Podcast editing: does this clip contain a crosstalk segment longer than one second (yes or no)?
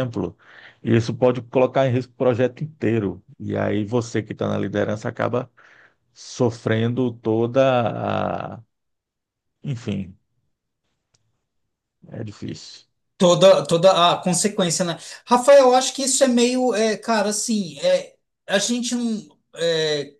no